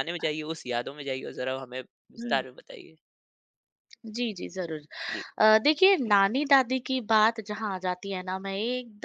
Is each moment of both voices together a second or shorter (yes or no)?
yes